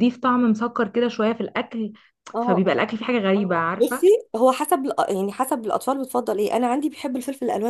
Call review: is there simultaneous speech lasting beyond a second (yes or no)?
no